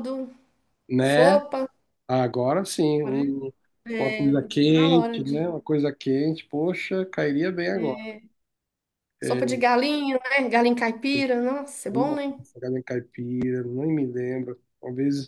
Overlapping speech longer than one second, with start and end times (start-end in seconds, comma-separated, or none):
4.0-5.5